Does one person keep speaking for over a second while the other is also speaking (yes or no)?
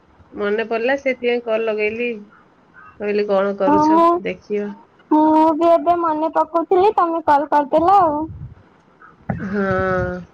no